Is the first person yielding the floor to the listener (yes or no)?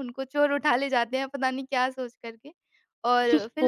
yes